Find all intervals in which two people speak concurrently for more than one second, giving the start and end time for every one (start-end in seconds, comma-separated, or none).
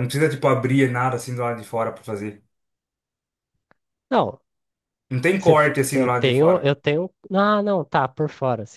5.4-6.7